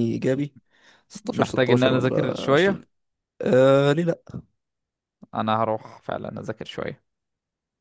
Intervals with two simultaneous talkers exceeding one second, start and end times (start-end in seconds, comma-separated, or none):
1.3-2.8